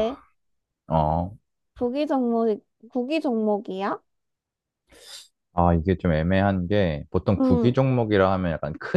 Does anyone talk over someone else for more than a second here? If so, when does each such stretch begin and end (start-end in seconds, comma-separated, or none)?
none